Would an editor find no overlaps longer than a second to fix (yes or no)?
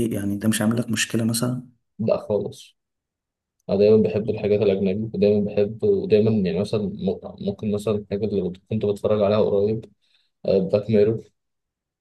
yes